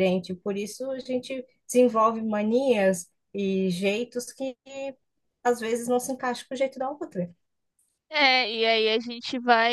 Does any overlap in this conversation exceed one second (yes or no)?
no